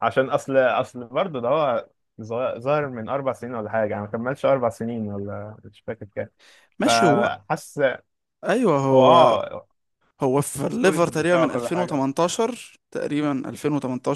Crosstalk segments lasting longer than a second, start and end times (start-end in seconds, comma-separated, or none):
10.7-12.0